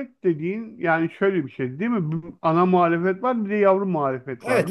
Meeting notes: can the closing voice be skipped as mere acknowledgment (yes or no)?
no